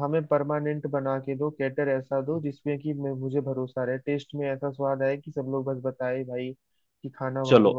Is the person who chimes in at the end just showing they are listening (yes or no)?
no